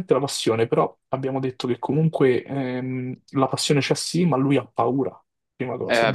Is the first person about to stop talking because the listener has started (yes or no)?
yes